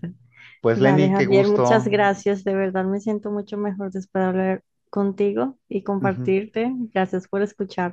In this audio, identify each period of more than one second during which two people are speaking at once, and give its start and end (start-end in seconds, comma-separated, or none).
0.7-2.1